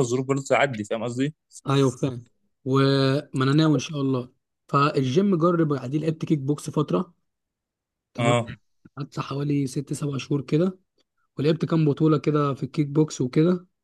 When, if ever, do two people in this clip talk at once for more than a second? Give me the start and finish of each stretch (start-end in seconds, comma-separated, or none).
none